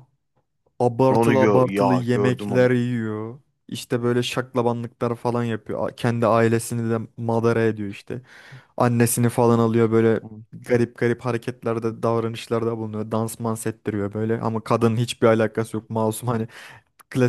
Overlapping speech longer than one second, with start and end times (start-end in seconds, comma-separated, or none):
1.1-2.7